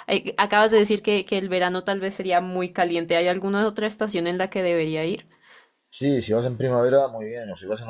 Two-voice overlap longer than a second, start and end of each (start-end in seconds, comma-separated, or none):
none